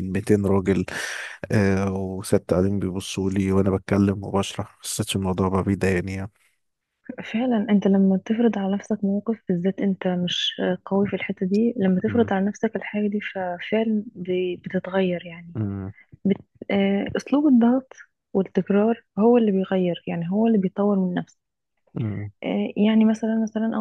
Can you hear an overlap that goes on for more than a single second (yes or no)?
no